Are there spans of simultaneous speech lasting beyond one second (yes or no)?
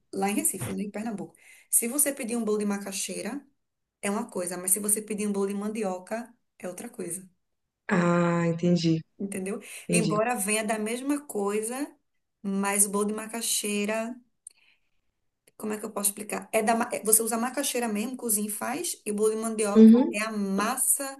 no